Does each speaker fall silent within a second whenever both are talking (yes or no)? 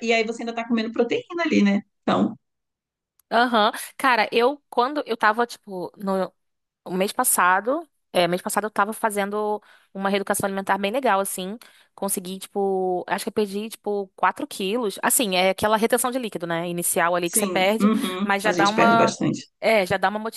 no